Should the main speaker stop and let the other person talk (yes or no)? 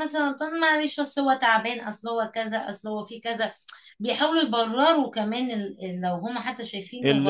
yes